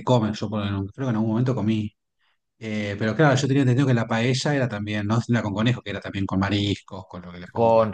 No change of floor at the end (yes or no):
no